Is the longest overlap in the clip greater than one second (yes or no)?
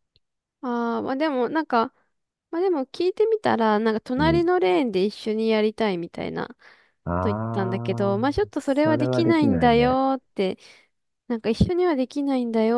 yes